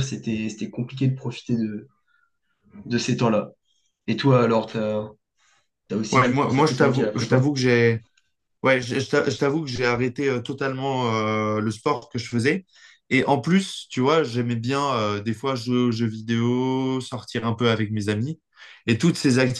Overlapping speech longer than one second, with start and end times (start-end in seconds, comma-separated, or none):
6.1-7.4